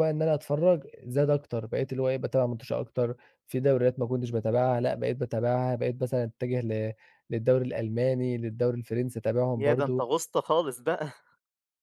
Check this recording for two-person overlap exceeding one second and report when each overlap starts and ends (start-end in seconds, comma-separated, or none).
none